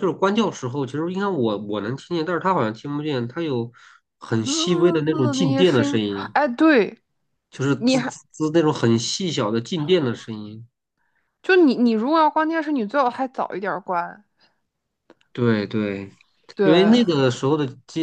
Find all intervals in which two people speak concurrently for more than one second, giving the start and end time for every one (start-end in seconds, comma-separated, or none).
4.4-6.3